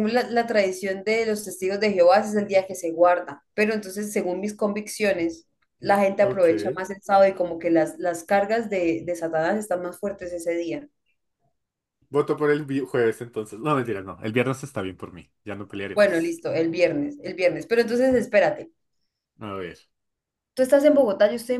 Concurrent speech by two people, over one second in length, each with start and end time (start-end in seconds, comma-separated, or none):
none